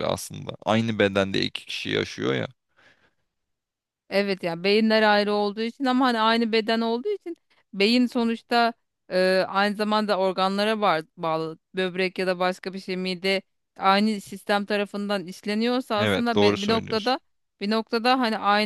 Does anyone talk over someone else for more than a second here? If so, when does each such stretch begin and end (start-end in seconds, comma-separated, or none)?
16.0-17.2